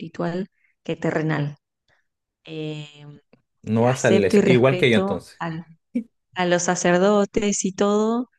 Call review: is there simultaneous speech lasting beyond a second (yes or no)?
yes